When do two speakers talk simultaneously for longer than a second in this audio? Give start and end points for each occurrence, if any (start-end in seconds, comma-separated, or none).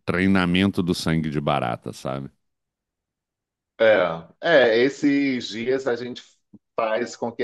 none